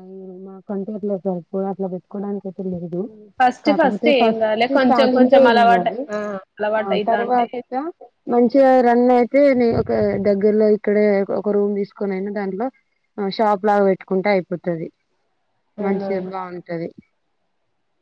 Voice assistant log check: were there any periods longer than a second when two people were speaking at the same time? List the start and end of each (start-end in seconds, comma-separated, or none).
3.7-5.9